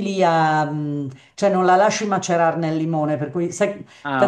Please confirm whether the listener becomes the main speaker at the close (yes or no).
no